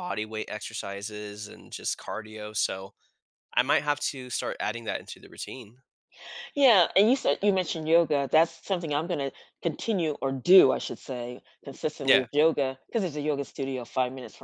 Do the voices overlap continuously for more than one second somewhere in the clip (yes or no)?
no